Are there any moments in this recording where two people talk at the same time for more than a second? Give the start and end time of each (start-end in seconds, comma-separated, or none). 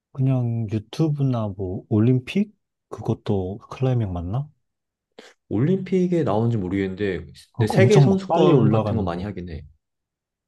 7.5-9.3